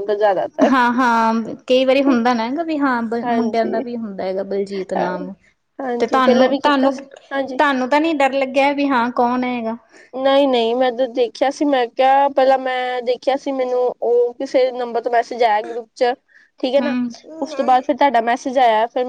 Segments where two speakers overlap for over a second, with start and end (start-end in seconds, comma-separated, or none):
6.0-7.6